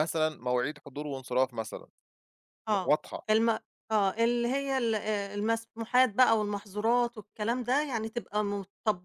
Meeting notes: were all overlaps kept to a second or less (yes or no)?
yes